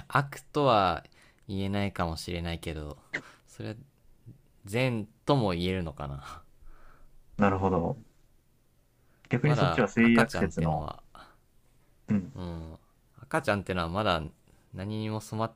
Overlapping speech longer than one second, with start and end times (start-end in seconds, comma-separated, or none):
9.4-10.8